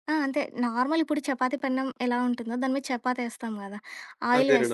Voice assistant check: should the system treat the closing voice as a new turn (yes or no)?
no